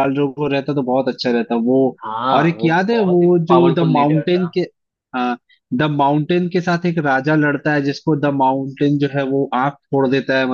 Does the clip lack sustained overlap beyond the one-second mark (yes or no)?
no